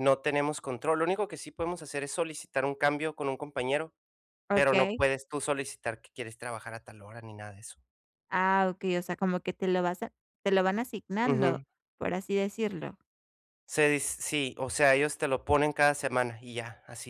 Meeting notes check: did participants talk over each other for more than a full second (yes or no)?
no